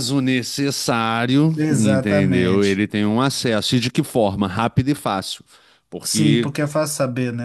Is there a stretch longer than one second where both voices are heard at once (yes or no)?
yes